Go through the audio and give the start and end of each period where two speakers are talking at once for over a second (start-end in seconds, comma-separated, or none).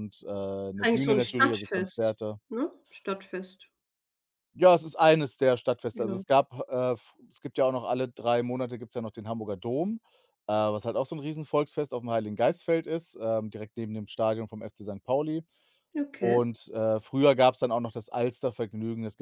0.8-2.4